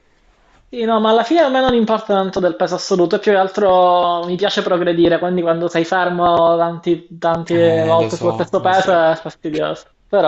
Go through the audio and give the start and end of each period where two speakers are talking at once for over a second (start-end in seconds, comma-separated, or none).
7.5-9.1